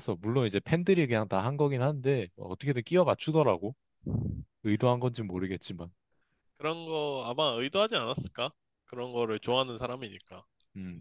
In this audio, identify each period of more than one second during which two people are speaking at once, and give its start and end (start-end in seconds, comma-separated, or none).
none